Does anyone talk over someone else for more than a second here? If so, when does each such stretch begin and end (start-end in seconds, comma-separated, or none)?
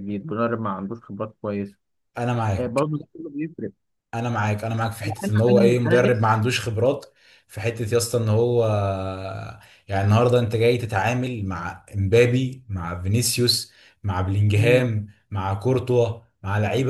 5.1-6.3